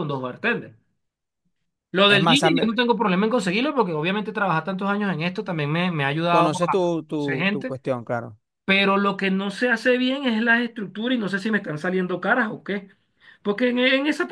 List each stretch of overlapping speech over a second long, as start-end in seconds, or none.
6.2-7.7